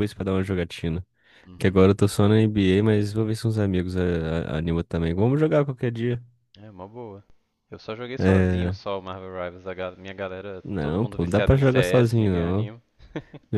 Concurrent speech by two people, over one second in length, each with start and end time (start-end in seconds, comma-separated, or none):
10.6-12.7